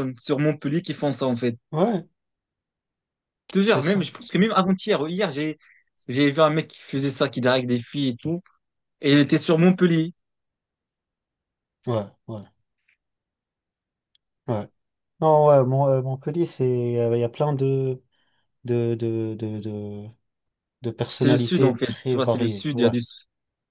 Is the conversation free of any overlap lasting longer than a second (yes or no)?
no